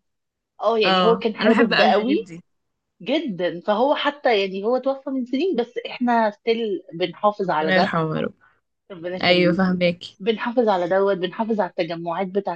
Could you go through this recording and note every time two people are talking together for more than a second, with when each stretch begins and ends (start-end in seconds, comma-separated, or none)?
0.8-2.3